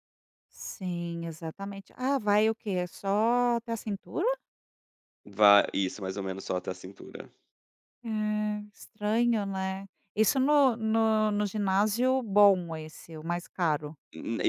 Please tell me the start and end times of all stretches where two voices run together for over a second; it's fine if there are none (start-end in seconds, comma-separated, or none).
none